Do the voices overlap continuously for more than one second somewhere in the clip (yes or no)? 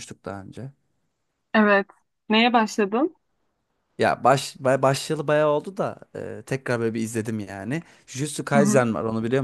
no